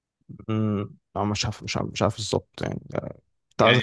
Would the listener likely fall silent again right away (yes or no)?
no